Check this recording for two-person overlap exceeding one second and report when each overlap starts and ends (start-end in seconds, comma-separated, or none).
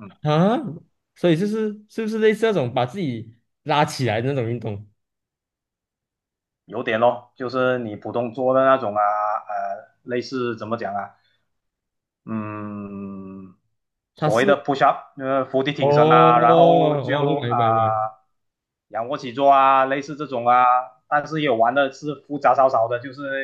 15.8-17.6